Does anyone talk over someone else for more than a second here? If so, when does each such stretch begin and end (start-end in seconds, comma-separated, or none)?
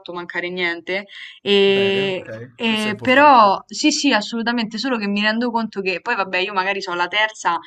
1.8-3.6